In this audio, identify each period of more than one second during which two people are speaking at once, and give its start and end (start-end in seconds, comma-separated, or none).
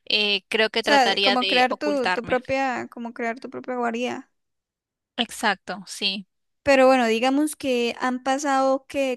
0.8-2.4